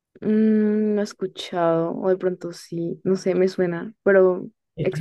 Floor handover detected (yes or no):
yes